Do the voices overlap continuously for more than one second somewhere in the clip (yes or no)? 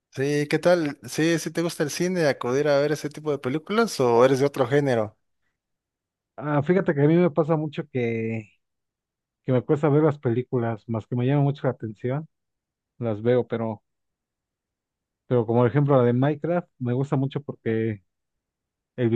no